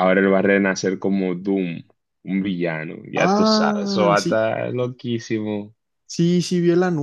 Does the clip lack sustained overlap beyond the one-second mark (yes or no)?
no